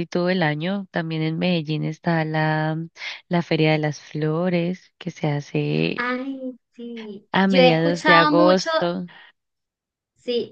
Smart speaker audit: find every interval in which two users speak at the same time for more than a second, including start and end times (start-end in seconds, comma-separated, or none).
7.3-8.7